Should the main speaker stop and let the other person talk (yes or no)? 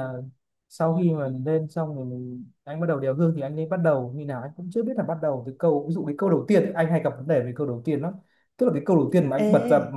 no